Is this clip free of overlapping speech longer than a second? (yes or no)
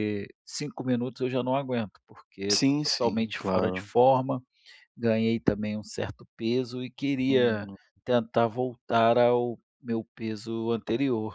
no